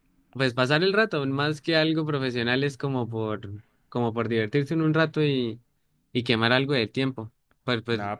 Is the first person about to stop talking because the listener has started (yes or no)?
yes